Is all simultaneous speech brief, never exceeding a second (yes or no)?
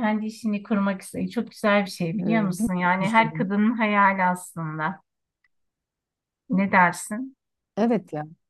no